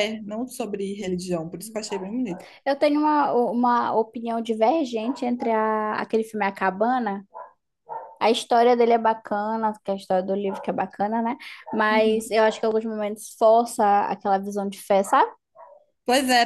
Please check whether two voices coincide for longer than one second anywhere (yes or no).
no